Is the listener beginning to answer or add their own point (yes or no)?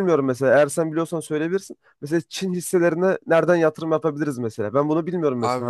yes